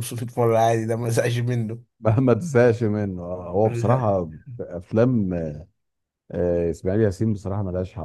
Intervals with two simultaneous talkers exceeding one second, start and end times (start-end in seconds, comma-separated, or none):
none